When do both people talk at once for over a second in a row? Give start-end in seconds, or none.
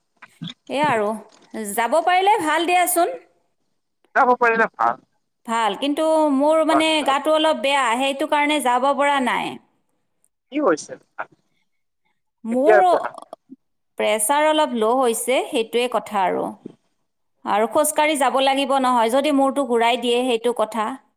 none